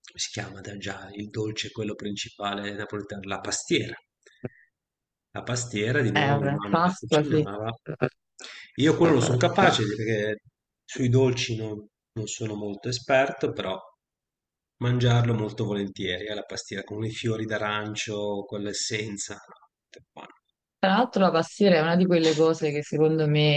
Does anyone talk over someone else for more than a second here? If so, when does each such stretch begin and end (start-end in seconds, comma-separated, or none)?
6.1-7.5